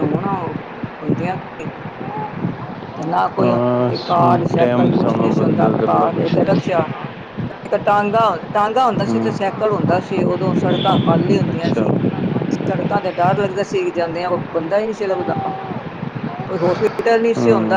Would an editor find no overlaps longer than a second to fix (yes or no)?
no